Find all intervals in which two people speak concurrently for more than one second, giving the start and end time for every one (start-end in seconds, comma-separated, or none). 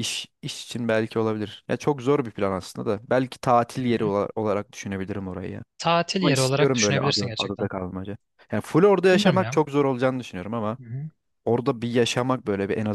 6.2-7.7